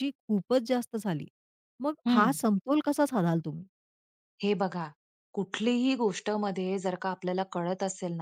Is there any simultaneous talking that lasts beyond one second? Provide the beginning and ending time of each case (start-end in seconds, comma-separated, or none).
none